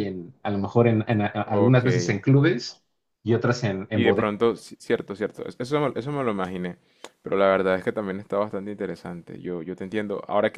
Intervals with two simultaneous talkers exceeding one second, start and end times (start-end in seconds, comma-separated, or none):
none